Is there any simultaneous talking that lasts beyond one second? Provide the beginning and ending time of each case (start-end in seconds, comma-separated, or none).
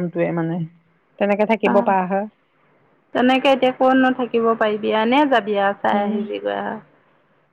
none